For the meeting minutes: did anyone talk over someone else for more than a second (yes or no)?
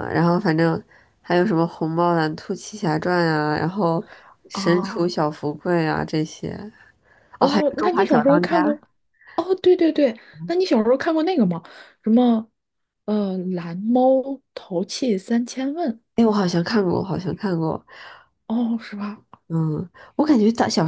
yes